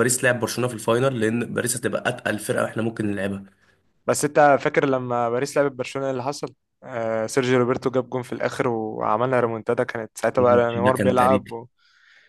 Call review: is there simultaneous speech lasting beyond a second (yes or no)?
yes